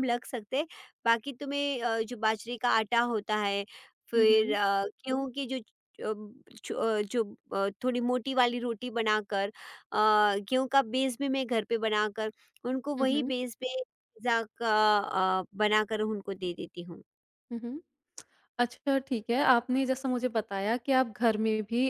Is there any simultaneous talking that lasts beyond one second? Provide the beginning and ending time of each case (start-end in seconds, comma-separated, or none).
none